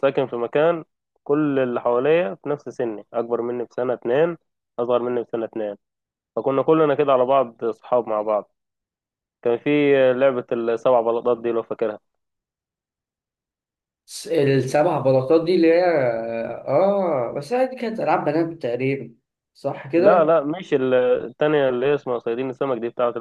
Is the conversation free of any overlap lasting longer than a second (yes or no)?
yes